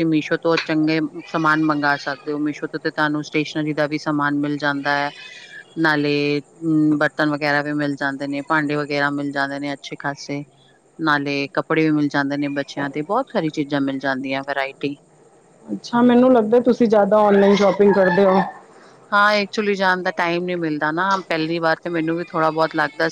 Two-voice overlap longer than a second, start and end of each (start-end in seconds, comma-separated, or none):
none